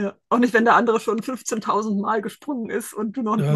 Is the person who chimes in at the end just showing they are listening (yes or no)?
no